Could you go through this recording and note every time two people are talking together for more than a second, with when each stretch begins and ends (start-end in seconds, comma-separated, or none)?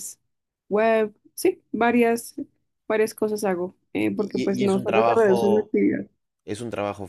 4.1-5.7